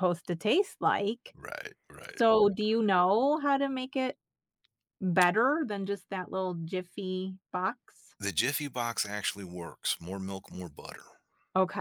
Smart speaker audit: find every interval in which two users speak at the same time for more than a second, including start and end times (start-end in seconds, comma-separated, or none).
none